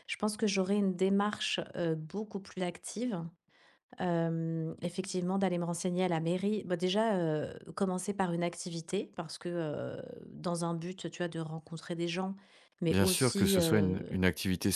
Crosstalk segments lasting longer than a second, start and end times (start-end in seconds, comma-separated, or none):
12.9-14.1